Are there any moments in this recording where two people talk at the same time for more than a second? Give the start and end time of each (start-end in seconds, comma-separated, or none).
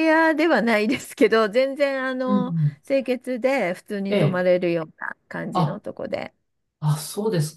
none